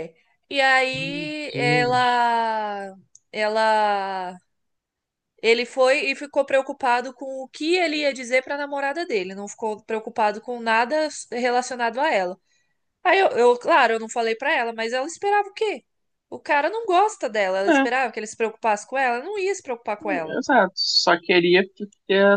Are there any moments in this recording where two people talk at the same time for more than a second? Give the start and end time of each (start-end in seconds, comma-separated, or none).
0.9-2.2